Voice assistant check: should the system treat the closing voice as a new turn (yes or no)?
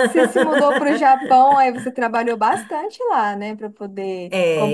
yes